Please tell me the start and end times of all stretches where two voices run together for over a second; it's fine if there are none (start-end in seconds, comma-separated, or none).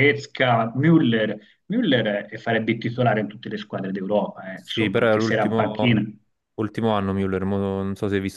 4.5-6.0